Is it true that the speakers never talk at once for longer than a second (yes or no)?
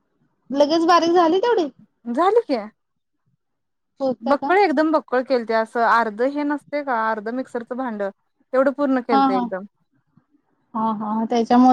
yes